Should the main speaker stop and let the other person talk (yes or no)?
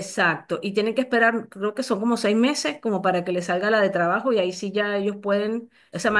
no